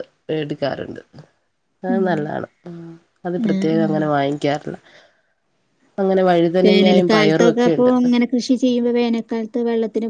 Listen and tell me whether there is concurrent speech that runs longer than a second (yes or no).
yes